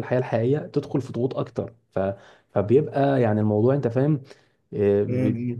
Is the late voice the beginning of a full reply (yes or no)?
yes